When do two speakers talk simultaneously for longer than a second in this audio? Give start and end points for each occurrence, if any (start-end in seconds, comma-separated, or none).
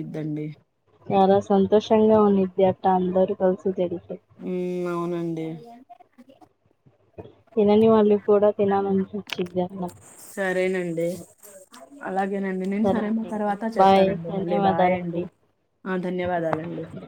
12.8-15.2